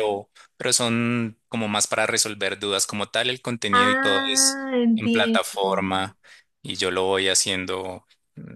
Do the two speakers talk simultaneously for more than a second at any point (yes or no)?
yes